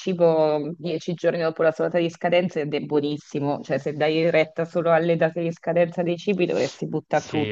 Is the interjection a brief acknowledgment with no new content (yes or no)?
no